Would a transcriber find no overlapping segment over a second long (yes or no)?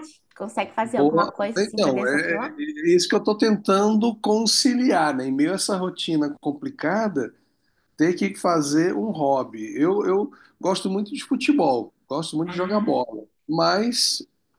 no